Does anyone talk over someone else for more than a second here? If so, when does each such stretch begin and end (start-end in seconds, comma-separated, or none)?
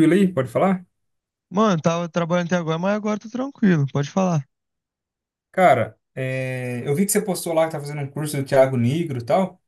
none